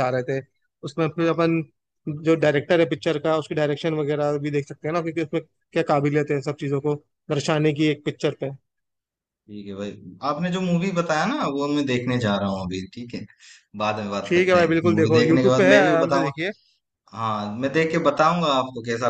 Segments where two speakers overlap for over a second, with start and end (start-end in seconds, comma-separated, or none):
14.3-16.3